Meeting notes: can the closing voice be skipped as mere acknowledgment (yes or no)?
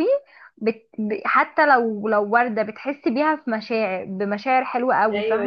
no